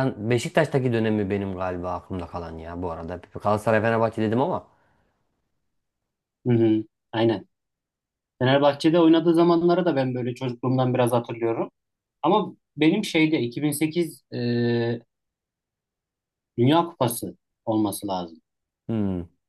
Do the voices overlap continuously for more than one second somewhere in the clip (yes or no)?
no